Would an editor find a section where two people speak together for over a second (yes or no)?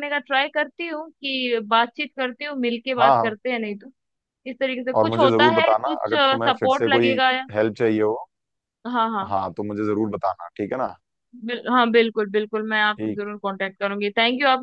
yes